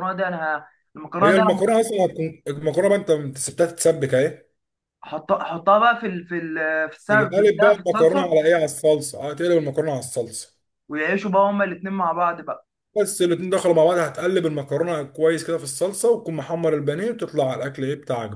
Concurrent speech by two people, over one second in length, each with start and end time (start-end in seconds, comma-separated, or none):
7.1-8.4